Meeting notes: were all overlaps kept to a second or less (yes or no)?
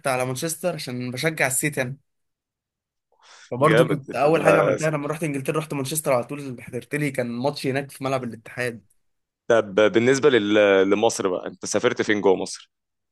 yes